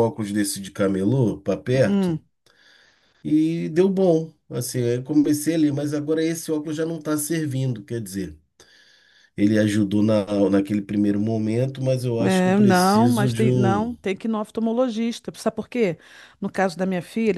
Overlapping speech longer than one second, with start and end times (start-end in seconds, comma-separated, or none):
12.2-13.9